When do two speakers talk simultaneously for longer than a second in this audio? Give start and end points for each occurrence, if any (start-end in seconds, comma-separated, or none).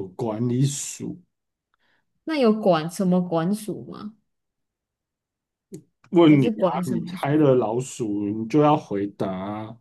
6.3-7.5